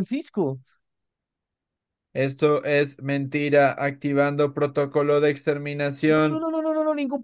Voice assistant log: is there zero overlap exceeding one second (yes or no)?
yes